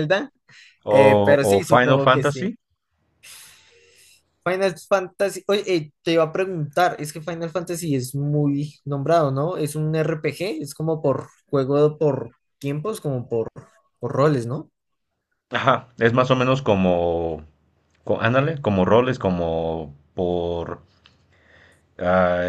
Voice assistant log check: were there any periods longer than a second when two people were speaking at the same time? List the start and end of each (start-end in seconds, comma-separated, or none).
0.9-2.5